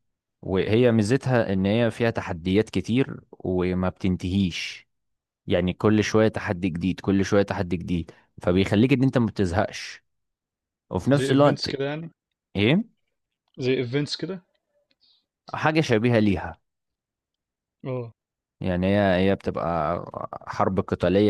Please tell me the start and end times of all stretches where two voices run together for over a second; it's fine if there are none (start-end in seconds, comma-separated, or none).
none